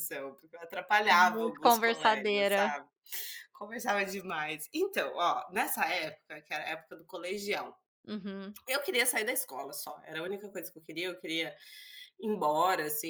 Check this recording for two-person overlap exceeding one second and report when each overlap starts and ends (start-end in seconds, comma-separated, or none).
1.1-2.8